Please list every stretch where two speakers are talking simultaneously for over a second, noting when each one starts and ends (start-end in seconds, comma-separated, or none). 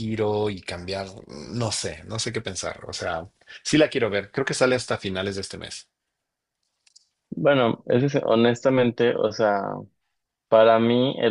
none